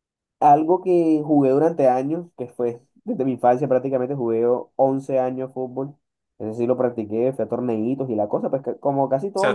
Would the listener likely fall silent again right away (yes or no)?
no